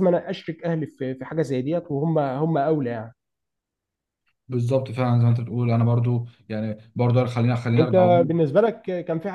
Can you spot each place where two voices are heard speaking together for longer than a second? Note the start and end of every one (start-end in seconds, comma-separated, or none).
none